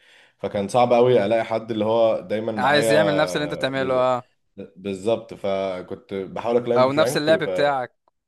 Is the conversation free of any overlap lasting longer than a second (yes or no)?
no